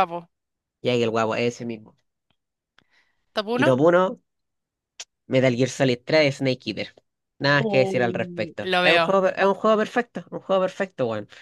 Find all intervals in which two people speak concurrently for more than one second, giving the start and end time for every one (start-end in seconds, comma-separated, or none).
7.5-9.2